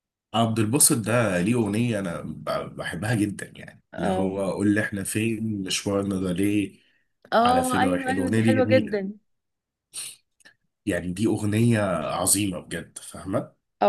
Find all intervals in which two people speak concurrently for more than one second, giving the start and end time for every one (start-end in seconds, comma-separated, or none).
7.4-9.1